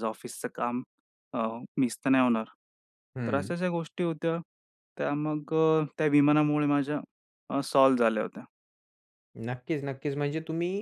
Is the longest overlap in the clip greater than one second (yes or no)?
no